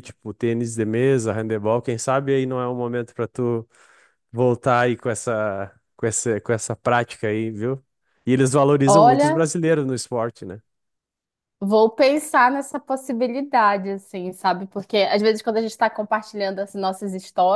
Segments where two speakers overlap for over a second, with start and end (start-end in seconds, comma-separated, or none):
none